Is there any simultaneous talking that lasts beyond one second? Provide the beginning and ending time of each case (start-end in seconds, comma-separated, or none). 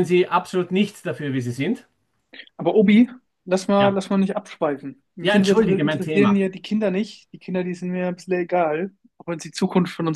5.2-6.5